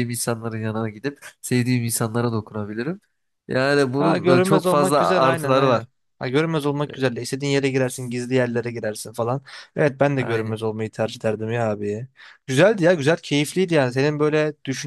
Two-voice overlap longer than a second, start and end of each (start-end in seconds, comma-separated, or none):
4.0-5.9